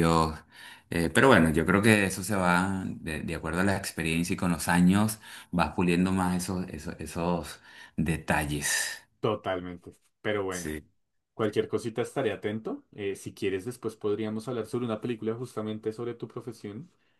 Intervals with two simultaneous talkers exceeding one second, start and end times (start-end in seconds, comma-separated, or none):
none